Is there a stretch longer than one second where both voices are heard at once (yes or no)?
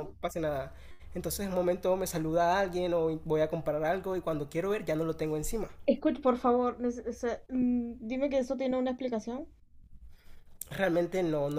no